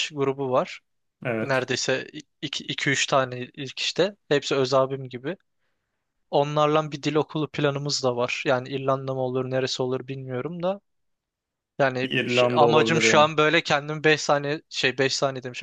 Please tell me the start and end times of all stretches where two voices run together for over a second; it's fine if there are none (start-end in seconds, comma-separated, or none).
12.0-13.3